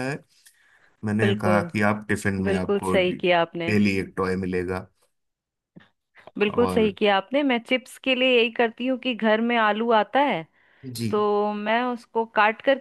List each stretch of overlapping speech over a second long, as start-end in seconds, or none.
2.5-3.7